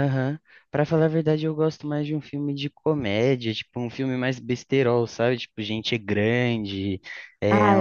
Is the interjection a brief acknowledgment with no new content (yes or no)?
yes